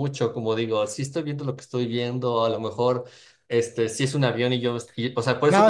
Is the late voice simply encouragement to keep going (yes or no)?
no